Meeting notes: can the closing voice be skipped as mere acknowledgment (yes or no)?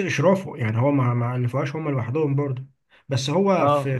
yes